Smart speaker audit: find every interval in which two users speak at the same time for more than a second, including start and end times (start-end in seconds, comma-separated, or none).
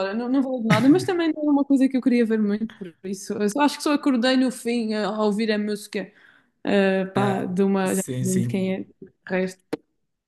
7.2-8.8